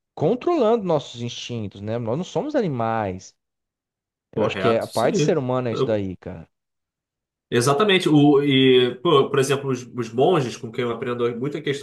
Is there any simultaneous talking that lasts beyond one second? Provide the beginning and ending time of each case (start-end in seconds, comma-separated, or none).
4.3-6.0